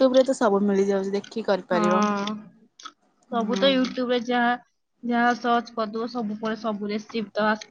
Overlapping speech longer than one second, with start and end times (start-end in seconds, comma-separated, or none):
none